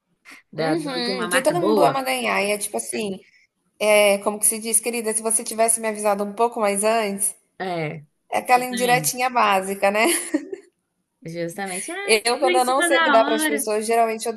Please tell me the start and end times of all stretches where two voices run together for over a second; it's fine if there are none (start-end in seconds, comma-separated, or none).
0.6-2.0, 12.0-13.7